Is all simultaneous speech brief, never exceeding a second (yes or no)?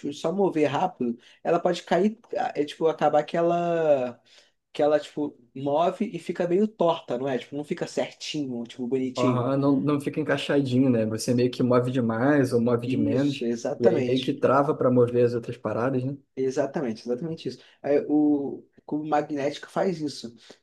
no